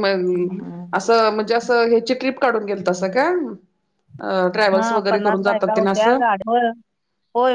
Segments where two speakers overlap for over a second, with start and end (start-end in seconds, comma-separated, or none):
4.8-6.2